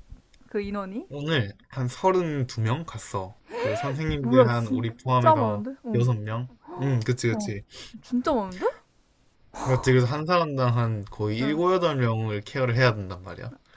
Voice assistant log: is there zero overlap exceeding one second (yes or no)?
no